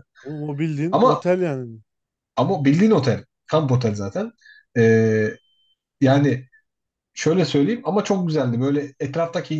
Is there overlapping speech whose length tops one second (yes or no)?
no